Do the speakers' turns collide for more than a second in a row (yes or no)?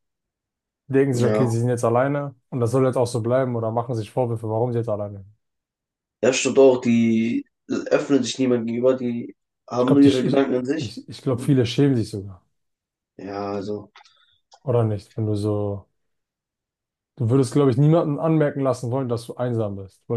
yes